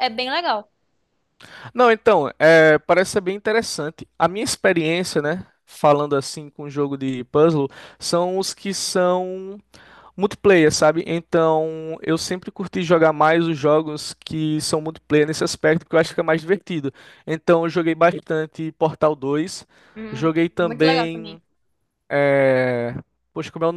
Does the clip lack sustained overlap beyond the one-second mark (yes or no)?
no